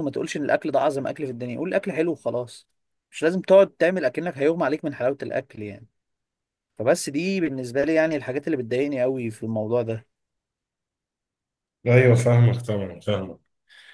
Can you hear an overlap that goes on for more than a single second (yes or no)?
no